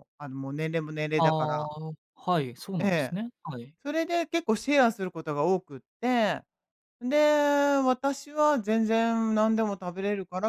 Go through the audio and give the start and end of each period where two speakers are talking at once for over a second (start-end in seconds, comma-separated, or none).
none